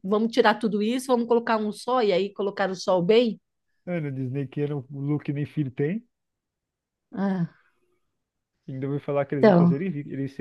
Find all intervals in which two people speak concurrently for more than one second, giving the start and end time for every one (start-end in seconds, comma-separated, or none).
none